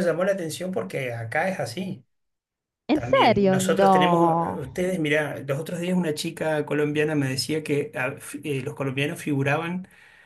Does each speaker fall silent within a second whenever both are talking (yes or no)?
no